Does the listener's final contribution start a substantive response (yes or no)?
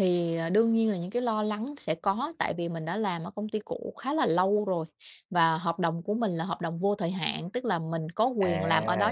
no